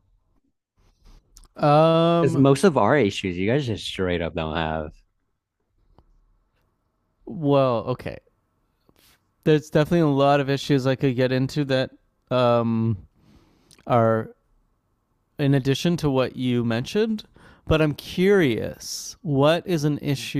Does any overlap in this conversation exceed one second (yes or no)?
no